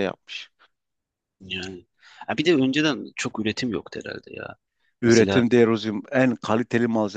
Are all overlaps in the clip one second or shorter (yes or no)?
yes